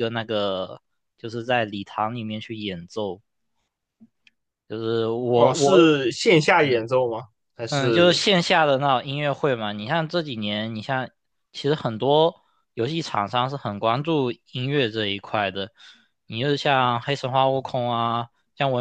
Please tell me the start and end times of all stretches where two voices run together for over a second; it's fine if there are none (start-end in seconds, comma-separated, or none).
none